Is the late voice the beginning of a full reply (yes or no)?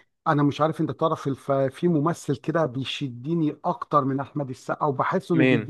no